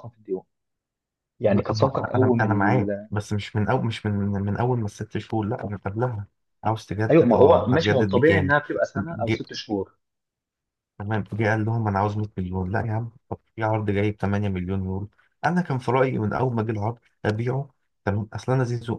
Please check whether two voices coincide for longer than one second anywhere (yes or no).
yes